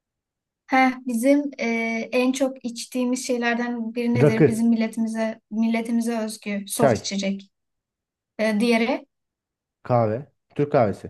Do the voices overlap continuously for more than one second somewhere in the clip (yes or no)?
no